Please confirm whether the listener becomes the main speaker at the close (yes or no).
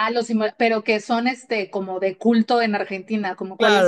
yes